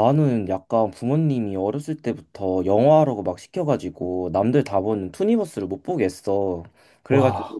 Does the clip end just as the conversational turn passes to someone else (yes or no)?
no